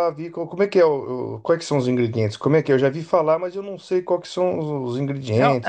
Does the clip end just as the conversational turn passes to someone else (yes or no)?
yes